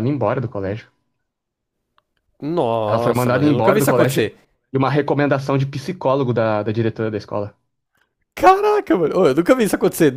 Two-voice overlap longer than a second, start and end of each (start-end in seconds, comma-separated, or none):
2.9-4.3